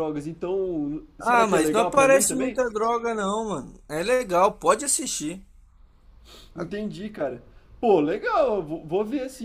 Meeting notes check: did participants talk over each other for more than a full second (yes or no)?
yes